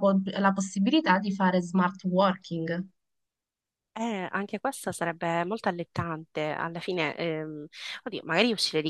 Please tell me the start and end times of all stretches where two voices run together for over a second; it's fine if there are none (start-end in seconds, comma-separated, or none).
none